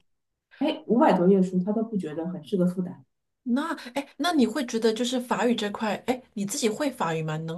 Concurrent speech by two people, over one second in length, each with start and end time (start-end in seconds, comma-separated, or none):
none